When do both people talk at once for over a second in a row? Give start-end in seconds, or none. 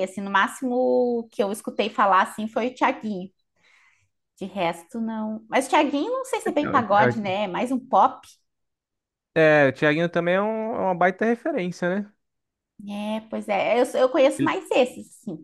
none